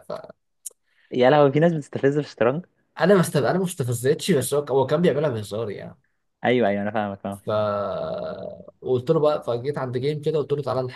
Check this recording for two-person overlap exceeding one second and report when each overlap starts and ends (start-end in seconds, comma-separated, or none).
none